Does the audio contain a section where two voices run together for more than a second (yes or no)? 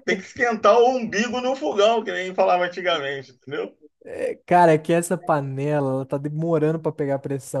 no